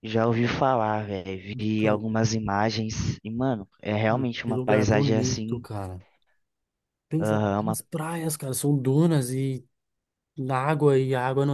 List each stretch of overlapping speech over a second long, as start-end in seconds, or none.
4.1-5.7